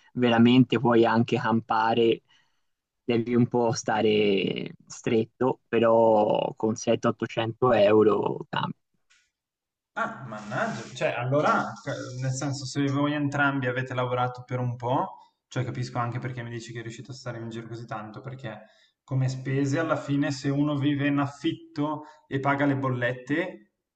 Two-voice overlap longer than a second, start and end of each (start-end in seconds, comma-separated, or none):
none